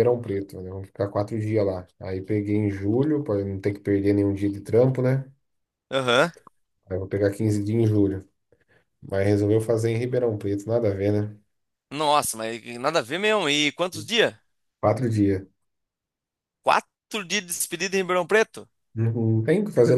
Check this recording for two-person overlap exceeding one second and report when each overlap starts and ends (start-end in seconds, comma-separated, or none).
none